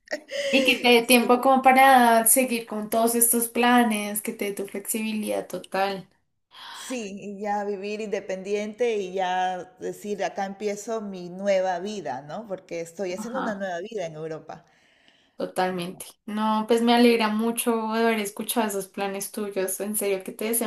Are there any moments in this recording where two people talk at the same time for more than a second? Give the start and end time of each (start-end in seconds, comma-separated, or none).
none